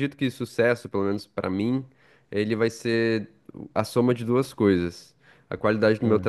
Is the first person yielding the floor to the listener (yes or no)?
no